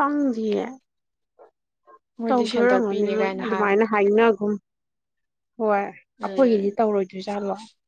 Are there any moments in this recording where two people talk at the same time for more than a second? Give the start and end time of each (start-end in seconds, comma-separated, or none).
2.3-3.8